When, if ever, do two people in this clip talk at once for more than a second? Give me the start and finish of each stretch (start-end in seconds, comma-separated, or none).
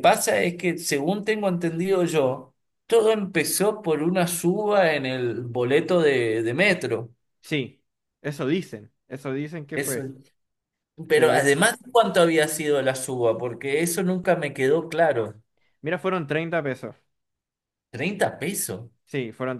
none